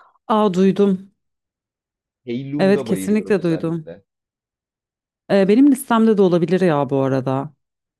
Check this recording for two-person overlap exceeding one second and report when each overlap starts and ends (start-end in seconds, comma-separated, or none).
2.6-3.9